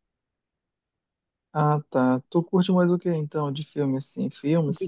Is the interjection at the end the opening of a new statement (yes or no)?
yes